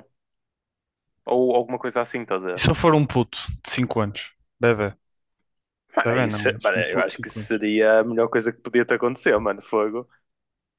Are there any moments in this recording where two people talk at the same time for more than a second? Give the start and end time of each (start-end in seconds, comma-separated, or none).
6.0-7.6